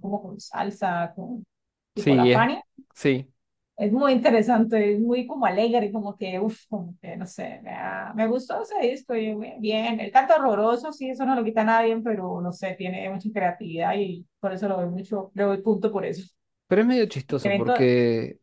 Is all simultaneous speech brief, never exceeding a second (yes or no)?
yes